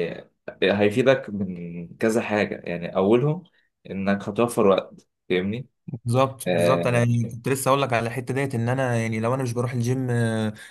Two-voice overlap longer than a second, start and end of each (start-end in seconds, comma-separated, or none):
none